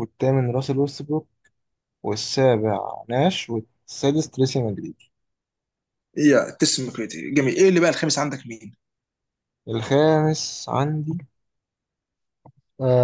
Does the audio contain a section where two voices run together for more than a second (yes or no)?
no